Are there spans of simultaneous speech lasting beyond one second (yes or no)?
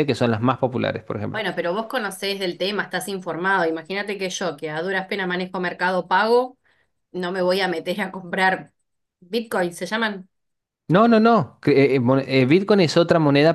no